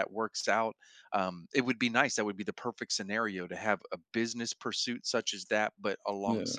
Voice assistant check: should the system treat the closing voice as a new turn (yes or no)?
no